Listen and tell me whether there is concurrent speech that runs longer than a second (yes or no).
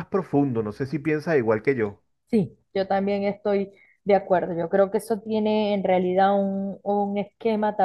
no